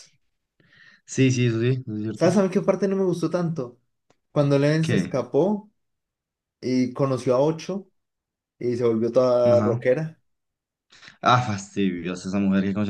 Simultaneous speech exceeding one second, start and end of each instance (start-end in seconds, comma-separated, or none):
none